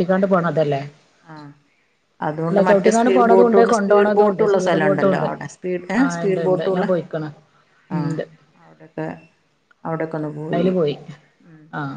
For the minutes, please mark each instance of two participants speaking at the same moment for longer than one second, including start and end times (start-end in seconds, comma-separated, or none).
3.2-5.1